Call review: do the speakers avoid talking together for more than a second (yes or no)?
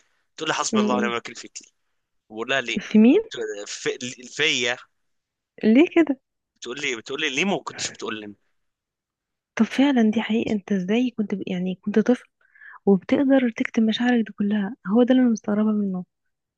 yes